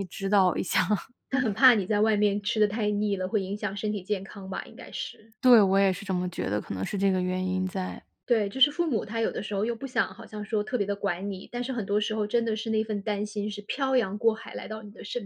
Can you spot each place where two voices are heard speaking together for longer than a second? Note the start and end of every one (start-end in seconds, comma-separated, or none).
none